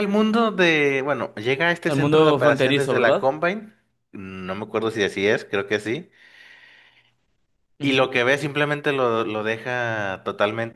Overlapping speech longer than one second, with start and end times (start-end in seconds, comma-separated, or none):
1.9-3.3